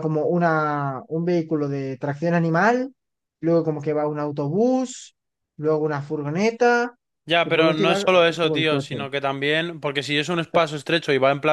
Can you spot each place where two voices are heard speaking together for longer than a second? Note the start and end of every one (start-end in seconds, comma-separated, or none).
7.4-9.0